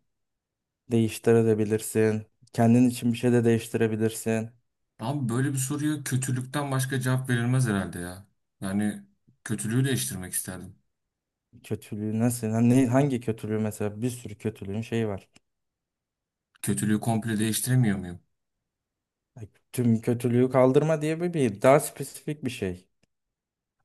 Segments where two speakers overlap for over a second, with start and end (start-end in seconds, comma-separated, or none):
none